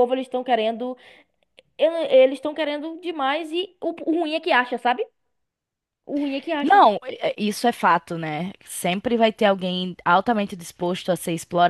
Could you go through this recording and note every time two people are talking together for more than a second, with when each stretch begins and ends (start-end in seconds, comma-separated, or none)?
none